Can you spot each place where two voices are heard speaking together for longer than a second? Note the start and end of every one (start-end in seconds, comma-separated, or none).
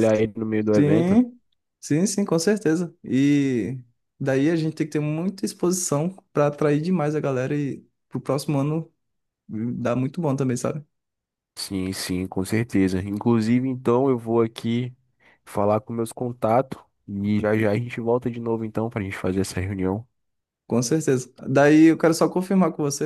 none